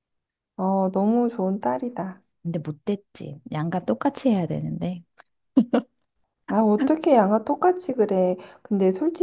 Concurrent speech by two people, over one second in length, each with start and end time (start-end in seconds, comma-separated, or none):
none